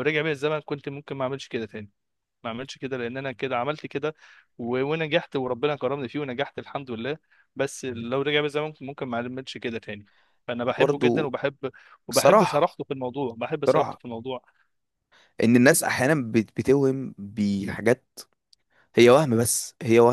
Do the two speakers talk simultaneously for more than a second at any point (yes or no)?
no